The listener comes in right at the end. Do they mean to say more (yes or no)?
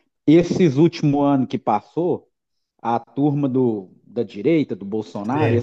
no